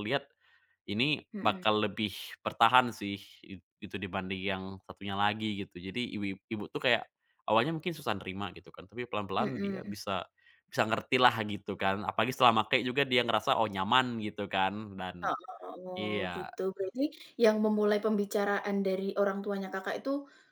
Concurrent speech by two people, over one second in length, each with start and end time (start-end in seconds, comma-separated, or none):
none